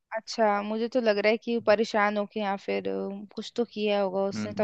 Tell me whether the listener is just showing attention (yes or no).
no